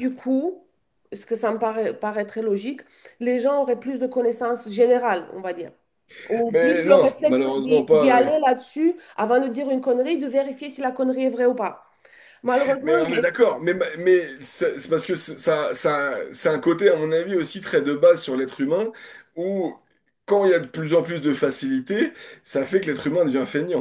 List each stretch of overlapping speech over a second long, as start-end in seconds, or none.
6.5-8.3